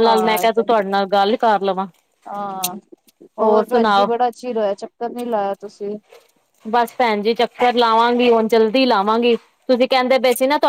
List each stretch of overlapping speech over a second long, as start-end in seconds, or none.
none